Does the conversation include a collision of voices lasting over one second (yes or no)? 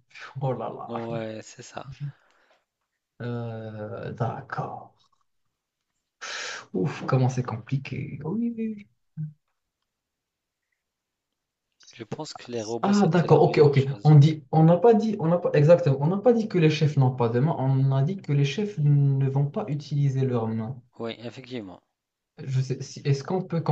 yes